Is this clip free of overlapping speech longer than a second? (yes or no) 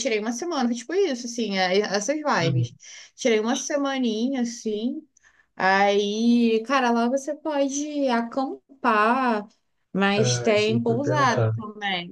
no